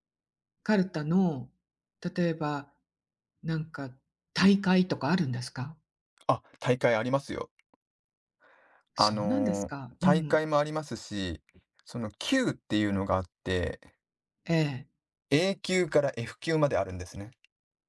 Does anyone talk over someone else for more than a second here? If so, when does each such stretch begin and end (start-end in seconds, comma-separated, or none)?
9.0-10.4